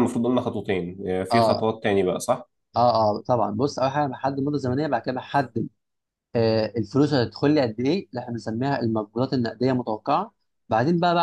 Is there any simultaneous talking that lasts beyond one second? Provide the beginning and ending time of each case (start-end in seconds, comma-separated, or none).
none